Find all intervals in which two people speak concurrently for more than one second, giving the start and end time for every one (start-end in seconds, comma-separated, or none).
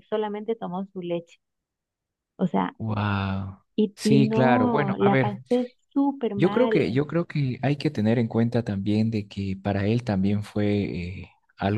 3.8-5.4